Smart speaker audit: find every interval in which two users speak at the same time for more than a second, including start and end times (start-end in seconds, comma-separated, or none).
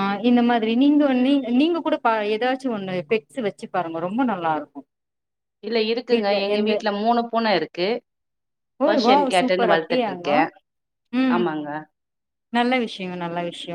8.9-10.4